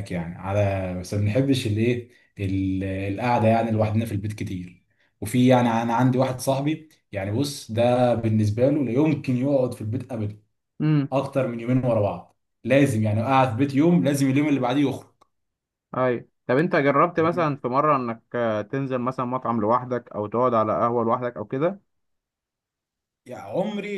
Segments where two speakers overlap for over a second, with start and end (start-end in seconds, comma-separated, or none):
none